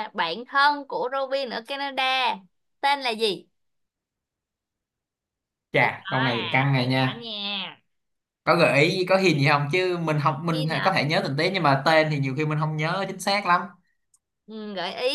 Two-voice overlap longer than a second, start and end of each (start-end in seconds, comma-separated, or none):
5.8-7.3